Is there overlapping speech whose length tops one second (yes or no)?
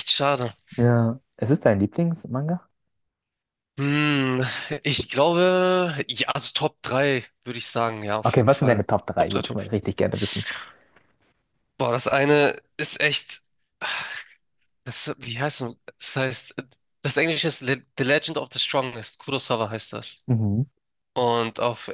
yes